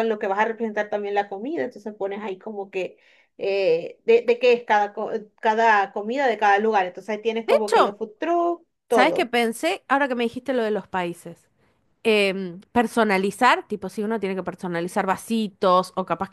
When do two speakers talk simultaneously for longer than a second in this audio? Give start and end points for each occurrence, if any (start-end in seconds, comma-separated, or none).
none